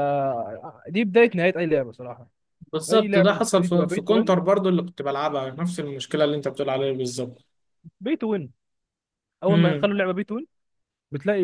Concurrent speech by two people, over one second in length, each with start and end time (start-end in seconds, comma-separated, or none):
2.9-4.4